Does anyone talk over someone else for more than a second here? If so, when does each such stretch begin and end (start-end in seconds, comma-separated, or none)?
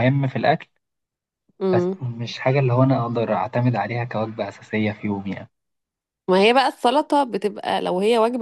none